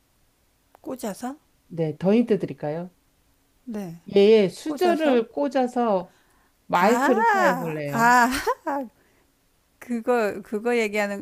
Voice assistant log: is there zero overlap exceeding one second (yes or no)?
no